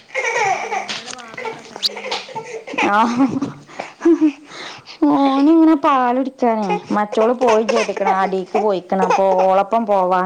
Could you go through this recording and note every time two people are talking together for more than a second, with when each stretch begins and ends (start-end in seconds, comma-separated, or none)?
none